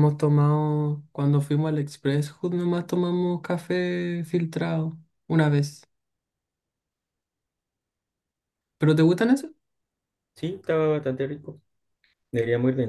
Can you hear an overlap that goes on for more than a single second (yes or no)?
no